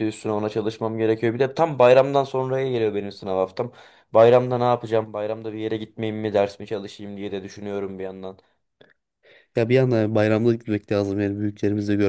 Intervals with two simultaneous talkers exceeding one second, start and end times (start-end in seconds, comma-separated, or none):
none